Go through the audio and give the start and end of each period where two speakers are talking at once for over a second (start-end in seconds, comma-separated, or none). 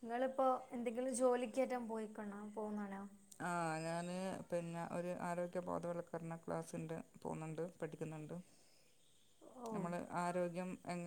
none